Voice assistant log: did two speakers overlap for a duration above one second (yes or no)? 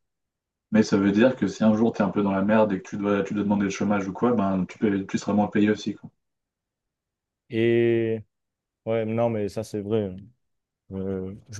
no